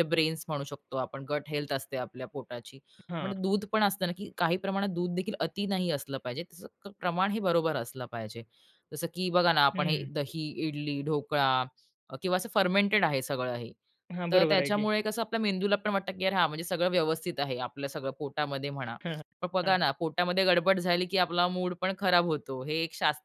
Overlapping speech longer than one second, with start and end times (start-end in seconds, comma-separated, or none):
none